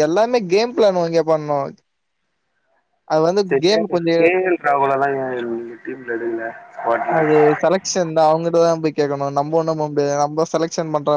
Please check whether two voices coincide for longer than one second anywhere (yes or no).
no